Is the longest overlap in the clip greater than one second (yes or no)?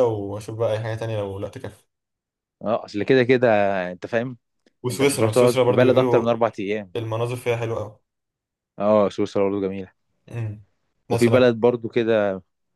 yes